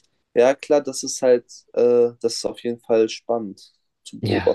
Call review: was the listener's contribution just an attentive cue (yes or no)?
no